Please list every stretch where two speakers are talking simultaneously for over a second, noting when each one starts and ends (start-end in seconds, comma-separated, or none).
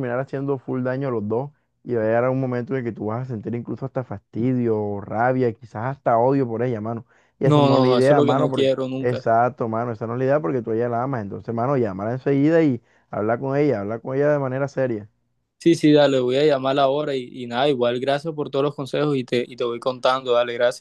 7.4-9.2